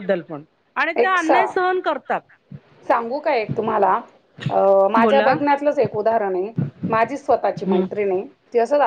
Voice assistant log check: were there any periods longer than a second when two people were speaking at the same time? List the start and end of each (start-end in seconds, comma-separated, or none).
none